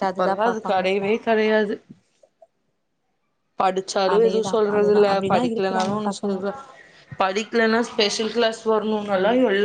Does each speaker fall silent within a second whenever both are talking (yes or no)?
no